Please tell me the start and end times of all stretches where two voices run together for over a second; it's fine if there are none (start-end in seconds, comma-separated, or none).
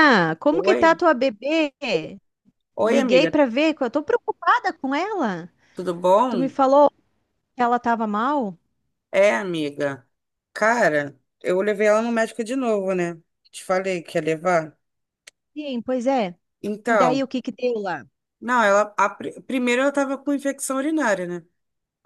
none